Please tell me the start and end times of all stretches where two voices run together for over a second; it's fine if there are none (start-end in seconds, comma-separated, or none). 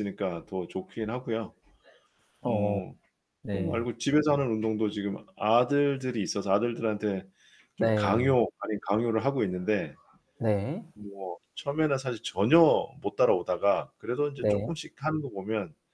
none